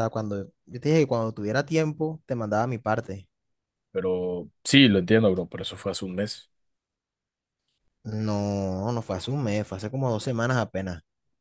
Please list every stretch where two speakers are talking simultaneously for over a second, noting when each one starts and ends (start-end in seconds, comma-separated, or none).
none